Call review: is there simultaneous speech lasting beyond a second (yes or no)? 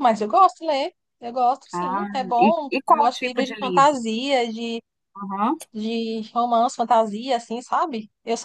yes